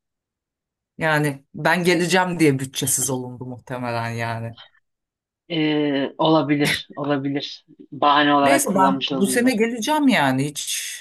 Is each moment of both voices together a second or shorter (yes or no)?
no